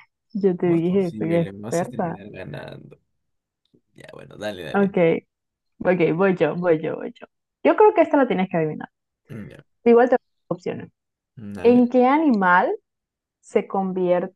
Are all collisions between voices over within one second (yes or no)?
no